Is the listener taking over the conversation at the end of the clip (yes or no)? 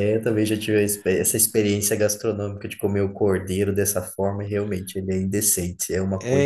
yes